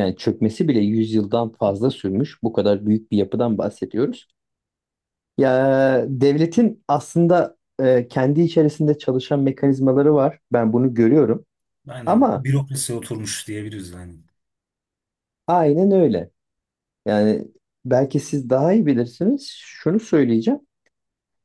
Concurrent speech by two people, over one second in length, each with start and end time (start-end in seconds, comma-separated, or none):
none